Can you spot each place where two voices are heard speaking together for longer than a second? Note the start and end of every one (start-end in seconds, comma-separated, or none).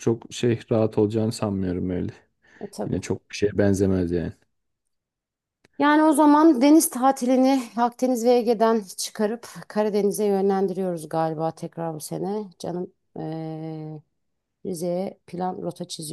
none